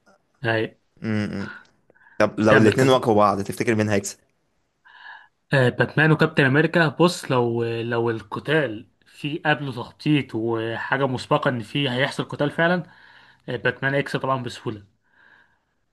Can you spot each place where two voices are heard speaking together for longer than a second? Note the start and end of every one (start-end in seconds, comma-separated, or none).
none